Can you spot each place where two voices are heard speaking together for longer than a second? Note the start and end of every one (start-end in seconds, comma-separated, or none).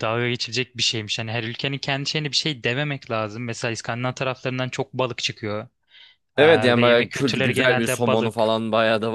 6.4-8.5